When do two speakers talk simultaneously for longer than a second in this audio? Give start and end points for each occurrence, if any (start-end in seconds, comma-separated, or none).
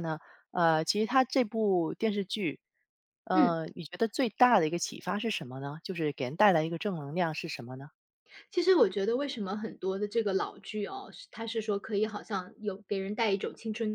none